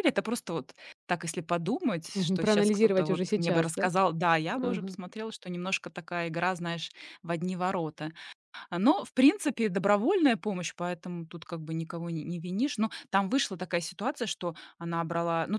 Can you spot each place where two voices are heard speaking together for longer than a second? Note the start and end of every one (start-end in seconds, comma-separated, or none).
2.1-3.9